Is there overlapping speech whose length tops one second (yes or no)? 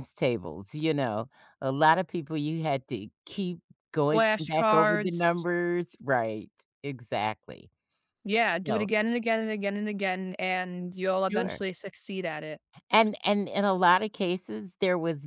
yes